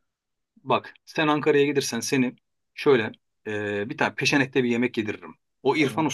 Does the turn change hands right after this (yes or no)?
no